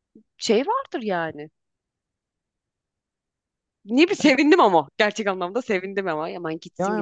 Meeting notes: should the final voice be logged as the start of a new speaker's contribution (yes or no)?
yes